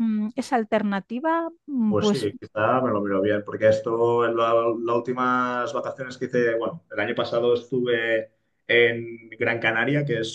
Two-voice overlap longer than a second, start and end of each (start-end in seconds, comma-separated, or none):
none